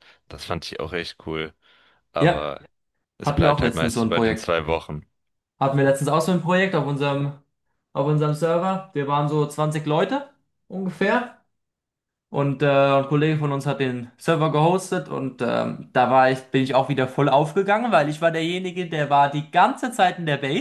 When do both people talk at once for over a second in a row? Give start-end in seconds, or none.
3.2-4.5